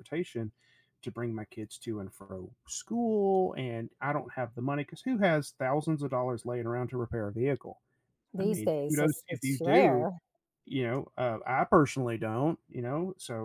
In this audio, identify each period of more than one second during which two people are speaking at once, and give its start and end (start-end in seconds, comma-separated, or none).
8.4-10.1